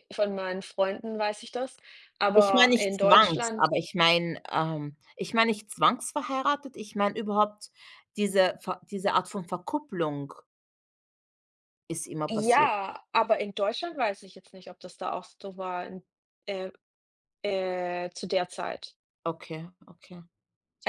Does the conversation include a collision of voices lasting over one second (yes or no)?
yes